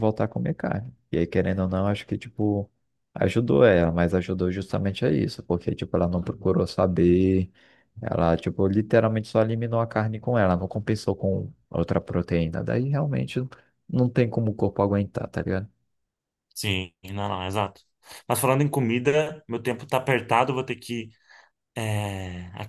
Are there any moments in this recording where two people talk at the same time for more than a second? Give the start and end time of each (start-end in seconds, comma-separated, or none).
none